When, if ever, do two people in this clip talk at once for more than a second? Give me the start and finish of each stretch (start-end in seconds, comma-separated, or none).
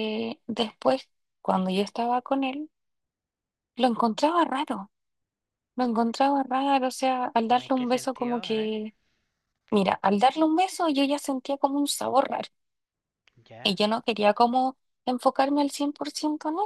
7.4-8.8